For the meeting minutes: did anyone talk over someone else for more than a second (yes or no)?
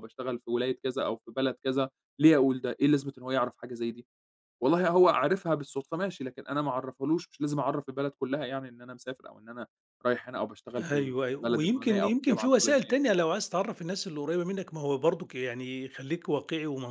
yes